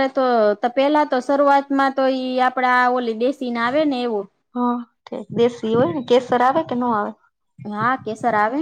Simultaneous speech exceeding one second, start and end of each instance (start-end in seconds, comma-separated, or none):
none